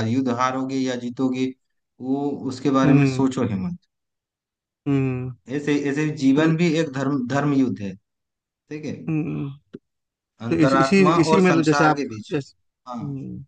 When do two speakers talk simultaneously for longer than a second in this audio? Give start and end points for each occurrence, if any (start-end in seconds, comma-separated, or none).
10.5-12.3